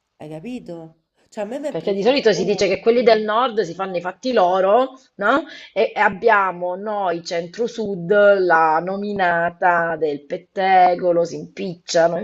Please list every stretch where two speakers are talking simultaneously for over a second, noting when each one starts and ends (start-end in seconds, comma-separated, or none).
1.7-3.3